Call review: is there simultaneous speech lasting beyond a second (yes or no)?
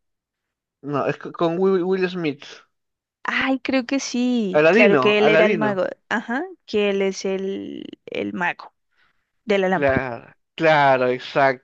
yes